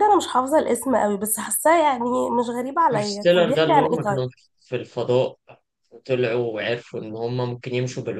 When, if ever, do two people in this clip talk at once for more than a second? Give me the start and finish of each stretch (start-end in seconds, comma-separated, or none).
2.9-4.2